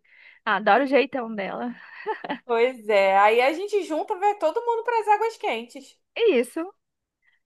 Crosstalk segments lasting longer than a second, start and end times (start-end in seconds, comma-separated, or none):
none